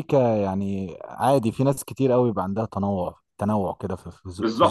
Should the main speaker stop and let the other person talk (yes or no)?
yes